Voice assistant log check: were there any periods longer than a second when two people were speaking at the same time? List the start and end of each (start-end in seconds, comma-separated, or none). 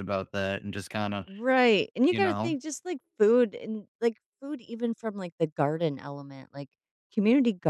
none